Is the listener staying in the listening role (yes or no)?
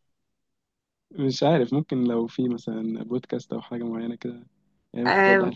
no